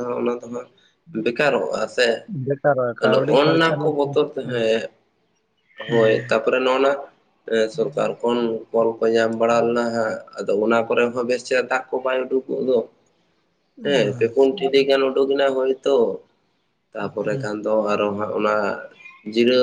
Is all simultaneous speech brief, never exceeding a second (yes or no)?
no